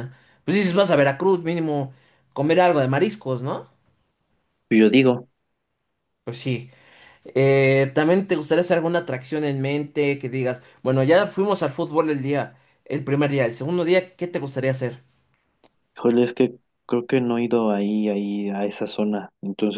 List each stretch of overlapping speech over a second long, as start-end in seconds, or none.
none